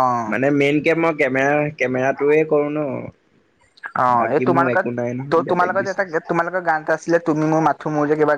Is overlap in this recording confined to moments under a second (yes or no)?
no